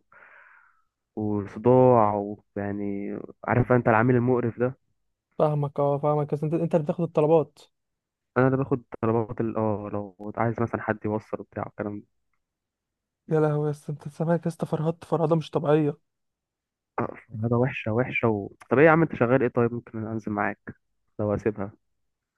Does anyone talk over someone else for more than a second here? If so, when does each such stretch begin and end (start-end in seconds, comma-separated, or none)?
none